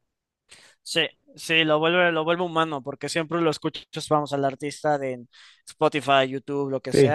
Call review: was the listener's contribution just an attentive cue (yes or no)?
no